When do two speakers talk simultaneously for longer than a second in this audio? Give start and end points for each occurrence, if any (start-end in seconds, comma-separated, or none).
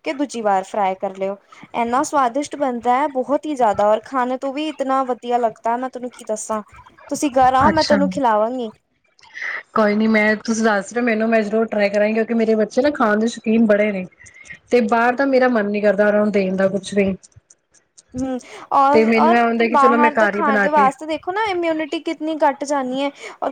18.9-20.9